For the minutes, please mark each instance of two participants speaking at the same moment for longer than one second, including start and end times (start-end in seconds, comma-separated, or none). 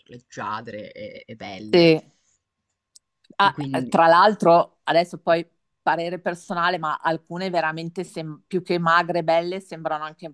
none